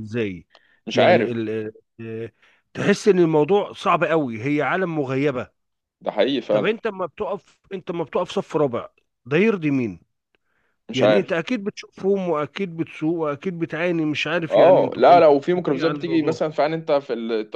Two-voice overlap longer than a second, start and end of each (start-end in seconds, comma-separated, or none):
14.5-16.4